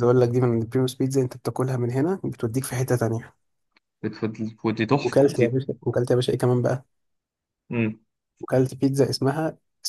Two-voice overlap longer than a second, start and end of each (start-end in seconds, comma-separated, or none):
none